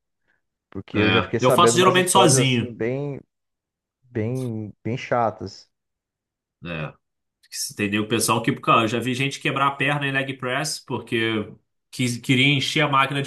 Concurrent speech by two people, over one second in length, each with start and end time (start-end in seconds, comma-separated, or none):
0.9-2.8